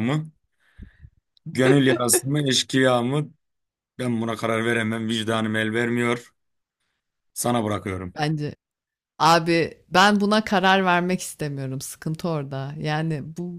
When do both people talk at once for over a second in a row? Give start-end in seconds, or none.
none